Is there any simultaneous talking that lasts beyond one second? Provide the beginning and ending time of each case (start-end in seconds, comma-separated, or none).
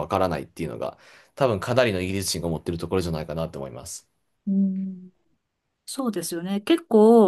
none